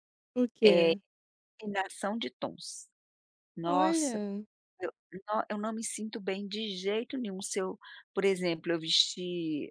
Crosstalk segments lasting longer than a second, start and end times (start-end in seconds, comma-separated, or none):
none